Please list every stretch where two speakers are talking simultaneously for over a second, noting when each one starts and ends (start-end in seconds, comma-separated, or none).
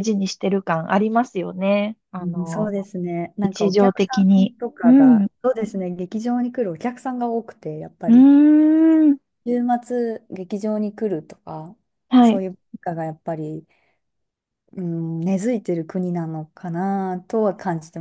3.4-5.3